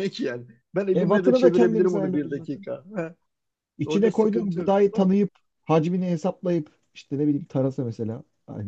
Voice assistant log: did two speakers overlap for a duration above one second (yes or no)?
yes